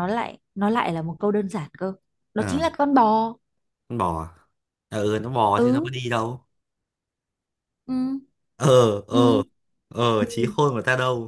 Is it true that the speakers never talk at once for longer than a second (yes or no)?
yes